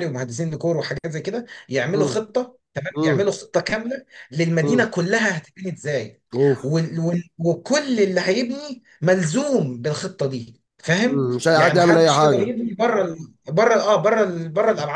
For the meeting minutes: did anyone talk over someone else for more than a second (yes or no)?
yes